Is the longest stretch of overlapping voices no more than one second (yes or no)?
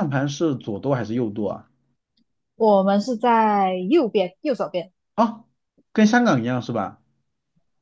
yes